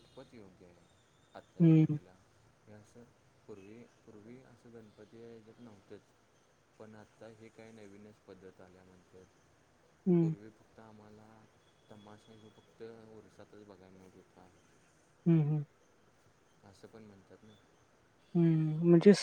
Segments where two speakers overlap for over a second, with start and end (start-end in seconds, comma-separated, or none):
none